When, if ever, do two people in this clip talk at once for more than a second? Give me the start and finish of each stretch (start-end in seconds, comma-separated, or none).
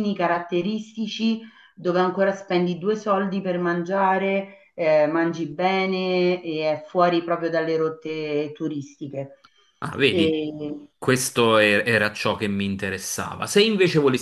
none